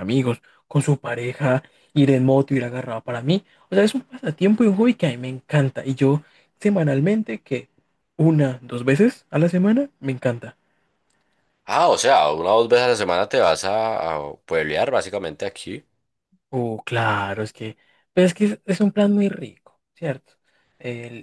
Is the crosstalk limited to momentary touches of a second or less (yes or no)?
yes